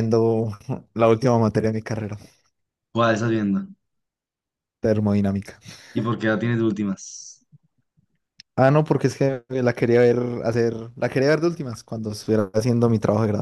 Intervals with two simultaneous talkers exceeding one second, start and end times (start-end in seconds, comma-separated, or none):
none